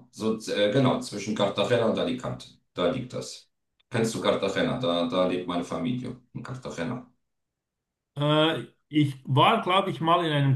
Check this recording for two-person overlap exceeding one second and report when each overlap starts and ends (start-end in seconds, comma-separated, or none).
none